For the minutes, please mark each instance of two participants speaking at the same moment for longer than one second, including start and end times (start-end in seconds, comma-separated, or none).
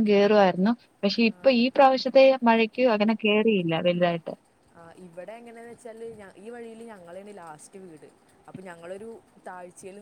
none